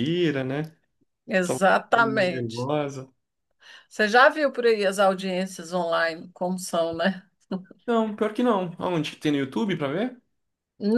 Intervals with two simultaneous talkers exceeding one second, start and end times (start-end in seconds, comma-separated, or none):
1.4-2.7